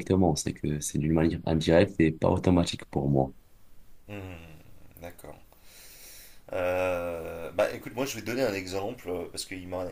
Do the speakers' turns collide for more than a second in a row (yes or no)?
no